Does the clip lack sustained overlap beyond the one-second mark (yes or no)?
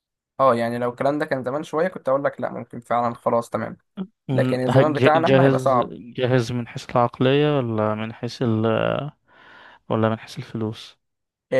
no